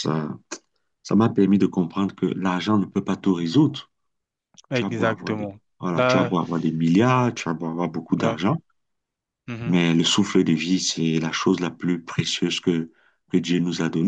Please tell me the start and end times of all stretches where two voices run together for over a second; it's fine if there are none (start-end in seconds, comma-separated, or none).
4.7-6.3